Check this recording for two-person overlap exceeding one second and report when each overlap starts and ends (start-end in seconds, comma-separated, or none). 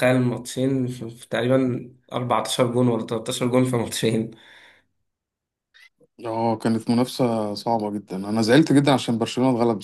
none